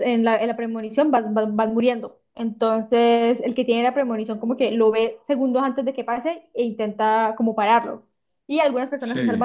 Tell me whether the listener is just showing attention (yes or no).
yes